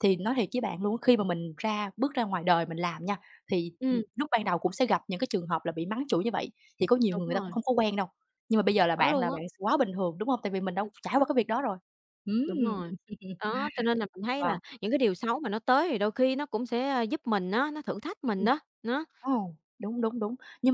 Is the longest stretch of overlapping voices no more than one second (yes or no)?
yes